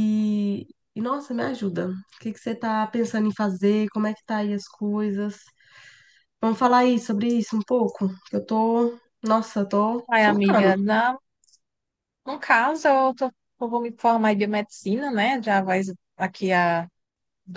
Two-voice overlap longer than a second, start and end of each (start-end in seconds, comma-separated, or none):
none